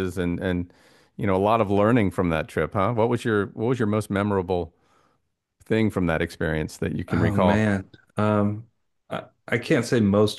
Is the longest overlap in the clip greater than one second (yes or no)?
no